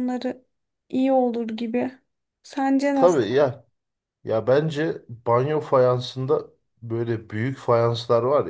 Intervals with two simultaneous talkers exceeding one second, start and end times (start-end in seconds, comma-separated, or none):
none